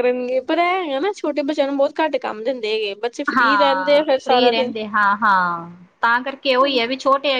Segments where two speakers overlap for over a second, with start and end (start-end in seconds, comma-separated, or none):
3.4-4.7